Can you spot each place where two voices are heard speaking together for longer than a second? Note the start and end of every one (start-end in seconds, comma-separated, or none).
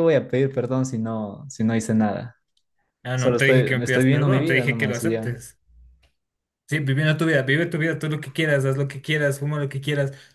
3.1-5.3